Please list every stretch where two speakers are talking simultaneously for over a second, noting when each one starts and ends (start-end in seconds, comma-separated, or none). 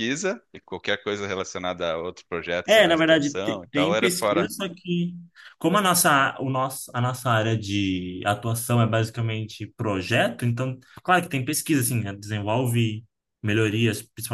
2.6-4.5